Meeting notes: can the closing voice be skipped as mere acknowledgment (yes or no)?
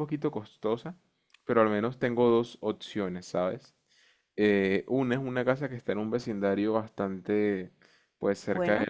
yes